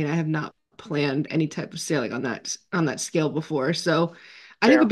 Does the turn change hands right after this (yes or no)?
no